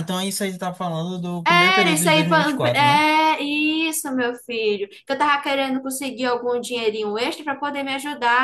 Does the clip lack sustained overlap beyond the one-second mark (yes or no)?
no